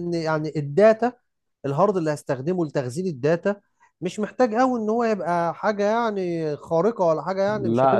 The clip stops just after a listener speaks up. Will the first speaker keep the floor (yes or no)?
no